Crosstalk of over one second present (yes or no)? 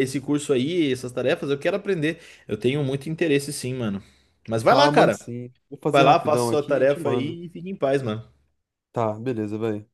yes